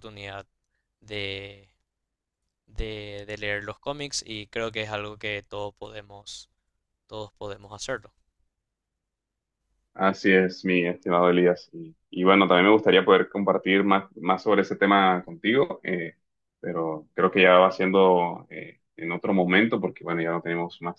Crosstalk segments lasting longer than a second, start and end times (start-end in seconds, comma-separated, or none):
none